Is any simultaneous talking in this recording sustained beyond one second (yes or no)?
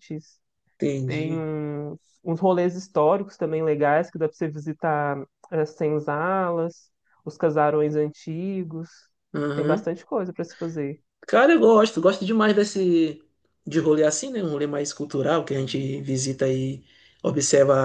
no